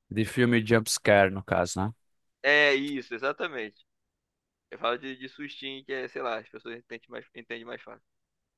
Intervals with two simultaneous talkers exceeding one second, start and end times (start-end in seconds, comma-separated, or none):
none